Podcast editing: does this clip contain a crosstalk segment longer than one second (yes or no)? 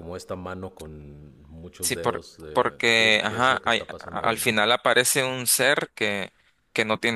yes